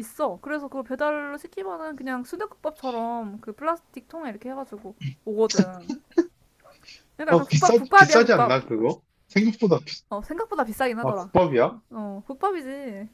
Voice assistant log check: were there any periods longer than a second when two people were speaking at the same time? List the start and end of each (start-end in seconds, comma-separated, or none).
7.3-8.6